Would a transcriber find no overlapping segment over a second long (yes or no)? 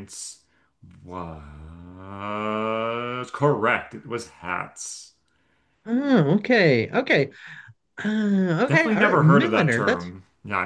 no